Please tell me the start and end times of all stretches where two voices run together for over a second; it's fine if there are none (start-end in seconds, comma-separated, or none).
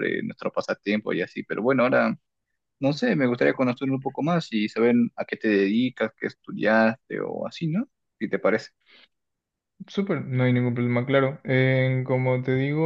none